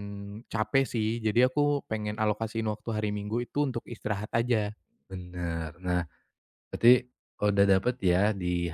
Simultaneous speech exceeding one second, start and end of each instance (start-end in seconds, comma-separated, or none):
none